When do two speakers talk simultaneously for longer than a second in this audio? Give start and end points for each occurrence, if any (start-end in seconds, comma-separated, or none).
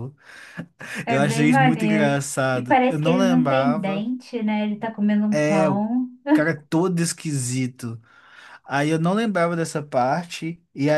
1.1-4.1